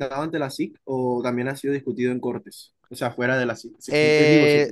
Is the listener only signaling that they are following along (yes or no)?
no